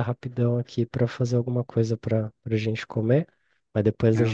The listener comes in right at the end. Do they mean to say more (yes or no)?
no